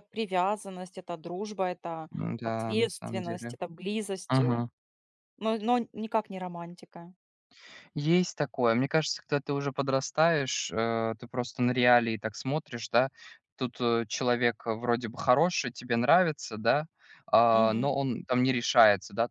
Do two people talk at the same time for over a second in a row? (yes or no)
yes